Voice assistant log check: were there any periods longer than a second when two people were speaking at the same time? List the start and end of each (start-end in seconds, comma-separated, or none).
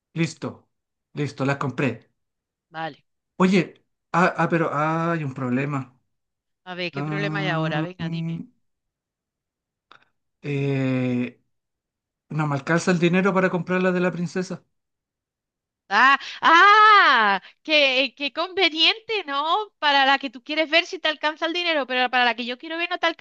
6.9-8.4